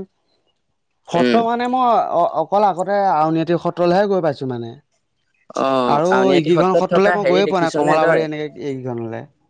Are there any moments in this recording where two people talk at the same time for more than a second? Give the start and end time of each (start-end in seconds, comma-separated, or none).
6.2-7.9